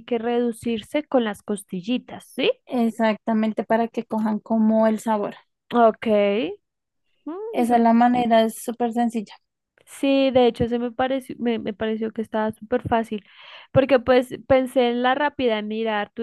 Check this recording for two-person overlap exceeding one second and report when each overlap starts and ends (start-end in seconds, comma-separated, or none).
none